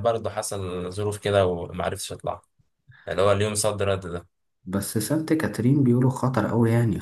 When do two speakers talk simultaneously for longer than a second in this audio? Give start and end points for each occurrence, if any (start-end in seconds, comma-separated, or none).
none